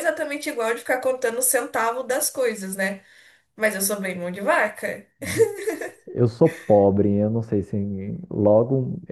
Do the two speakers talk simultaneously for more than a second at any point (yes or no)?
no